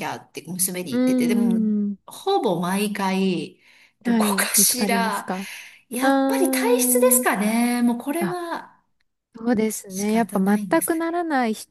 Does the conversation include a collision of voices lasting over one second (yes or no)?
yes